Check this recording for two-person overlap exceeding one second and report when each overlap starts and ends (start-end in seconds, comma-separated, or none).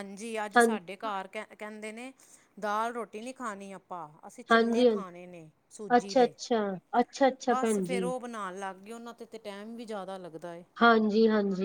none